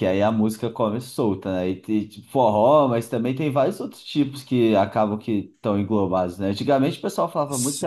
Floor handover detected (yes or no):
no